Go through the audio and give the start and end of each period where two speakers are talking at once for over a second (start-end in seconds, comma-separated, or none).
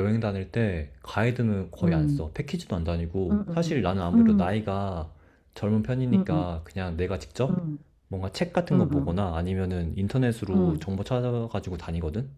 3.3-4.7